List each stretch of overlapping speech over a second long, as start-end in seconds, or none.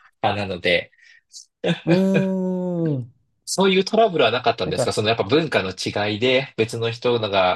none